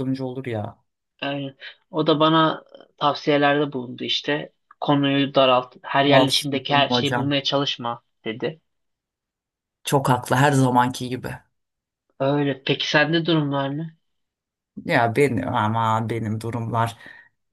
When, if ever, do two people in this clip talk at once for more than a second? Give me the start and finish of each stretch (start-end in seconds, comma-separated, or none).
6.0-7.3